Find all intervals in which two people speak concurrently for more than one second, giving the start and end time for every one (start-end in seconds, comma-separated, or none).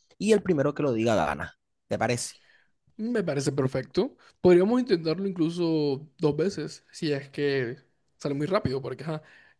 none